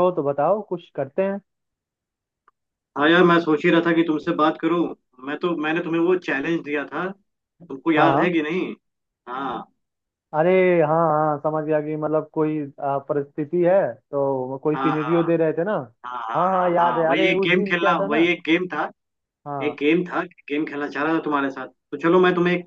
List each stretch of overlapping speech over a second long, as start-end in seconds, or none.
16.4-18.3